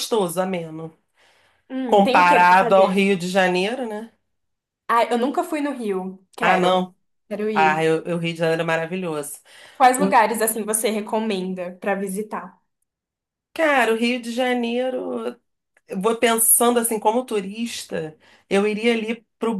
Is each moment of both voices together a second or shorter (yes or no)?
no